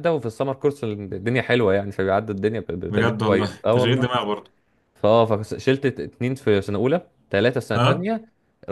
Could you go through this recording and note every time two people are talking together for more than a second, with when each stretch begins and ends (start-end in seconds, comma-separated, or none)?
2.9-4.1